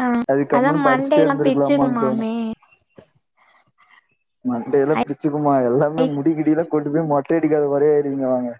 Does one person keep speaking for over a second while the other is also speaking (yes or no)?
yes